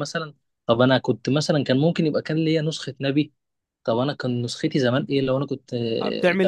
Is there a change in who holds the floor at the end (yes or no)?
yes